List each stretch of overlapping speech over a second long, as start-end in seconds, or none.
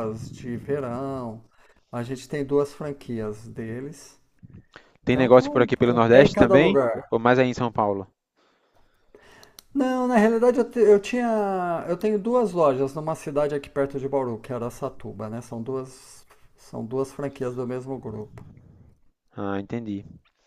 5.1-7.0